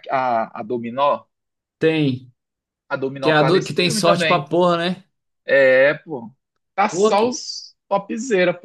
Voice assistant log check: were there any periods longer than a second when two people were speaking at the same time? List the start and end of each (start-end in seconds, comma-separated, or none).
3.2-4.5